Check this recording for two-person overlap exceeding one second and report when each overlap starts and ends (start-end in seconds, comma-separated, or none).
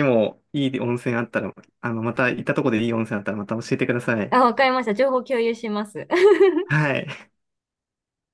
none